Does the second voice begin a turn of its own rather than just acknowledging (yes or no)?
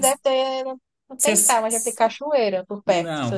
yes